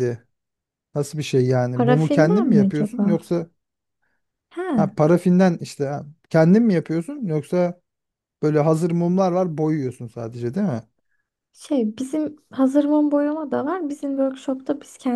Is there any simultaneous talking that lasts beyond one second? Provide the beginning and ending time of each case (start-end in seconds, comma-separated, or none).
1.7-3.2